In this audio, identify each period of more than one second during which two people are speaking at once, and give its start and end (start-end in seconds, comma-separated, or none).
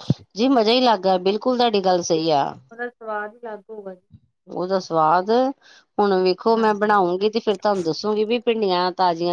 none